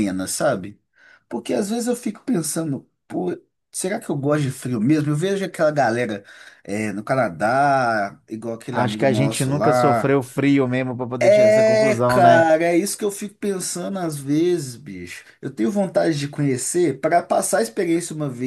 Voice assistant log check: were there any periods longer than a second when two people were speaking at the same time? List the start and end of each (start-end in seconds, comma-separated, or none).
8.7-10.2, 11.2-12.5